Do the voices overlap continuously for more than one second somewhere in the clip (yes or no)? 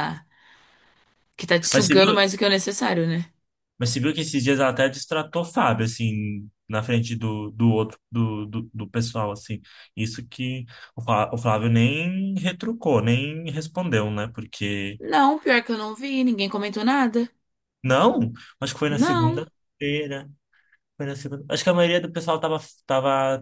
no